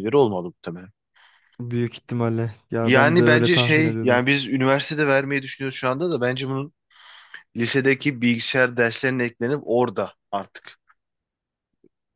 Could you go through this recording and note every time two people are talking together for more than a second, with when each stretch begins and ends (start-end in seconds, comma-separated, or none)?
2.8-4.2